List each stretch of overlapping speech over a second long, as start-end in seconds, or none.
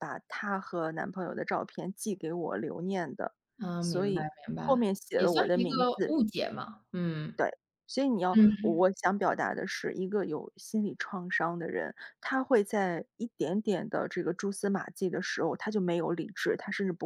3.8-6.2